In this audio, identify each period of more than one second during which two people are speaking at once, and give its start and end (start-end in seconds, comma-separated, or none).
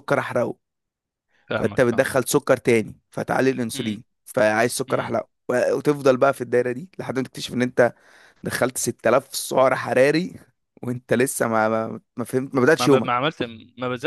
none